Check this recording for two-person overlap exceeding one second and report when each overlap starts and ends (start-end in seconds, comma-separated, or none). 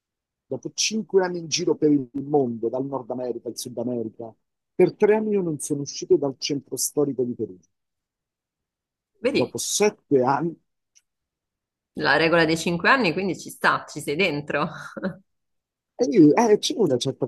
none